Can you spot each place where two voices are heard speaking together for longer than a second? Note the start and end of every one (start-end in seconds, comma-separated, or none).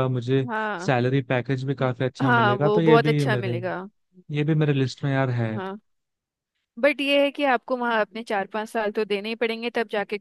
1.8-3.6